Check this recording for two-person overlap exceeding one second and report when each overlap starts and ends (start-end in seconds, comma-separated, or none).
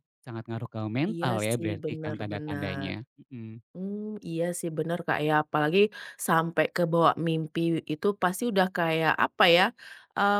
1.1-2.9